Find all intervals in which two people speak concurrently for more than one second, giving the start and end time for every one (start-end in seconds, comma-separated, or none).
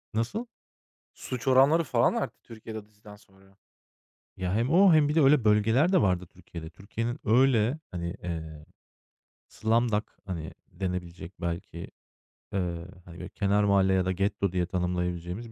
none